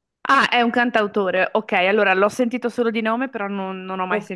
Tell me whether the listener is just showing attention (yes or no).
no